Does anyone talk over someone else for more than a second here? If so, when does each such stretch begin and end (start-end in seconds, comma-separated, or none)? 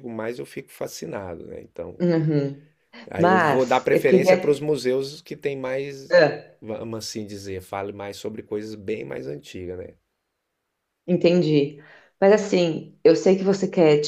3.2-4.6